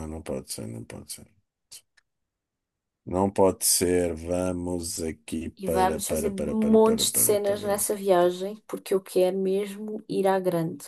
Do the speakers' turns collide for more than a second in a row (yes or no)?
yes